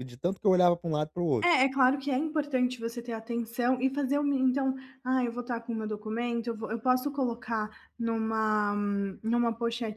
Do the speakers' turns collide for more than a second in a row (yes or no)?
no